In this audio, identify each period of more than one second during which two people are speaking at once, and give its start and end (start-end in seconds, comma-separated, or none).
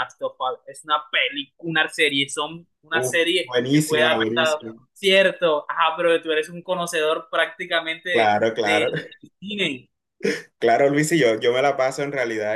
2.9-4.7